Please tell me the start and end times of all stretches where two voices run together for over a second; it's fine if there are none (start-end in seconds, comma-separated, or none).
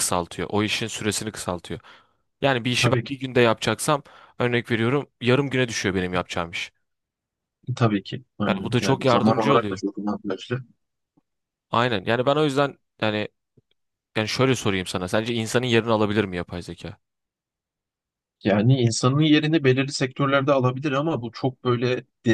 8.5-9.8